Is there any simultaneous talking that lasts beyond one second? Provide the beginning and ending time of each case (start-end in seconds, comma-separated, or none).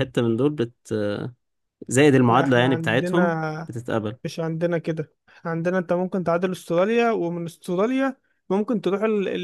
2.3-3.7